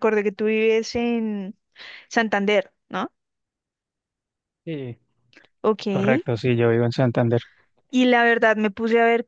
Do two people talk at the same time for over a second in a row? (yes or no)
no